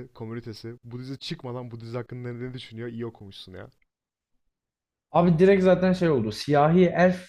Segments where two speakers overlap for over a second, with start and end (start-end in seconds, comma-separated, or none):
none